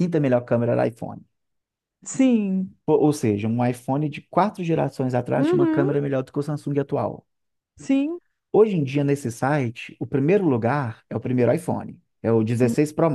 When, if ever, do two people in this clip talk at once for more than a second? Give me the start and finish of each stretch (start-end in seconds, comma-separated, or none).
none